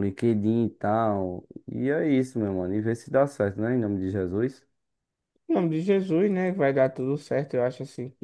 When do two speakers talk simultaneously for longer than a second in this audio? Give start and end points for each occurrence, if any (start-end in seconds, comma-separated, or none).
none